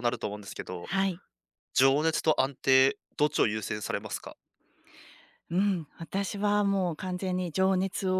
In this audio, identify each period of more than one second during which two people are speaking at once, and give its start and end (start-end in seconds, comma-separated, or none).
none